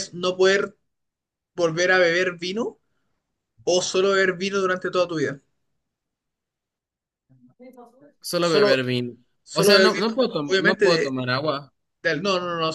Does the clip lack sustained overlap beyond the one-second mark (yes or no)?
no